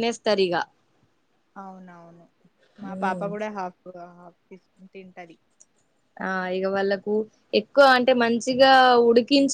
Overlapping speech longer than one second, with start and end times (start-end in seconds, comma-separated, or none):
none